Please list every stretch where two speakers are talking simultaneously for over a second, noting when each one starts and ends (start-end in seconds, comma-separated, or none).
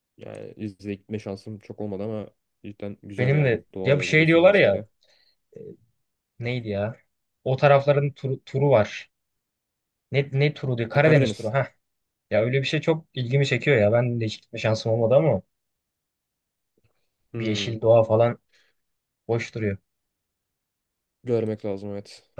3.2-4.8